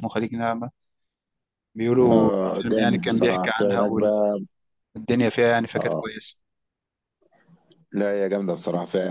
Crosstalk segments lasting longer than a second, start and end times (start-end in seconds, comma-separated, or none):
2.1-3.8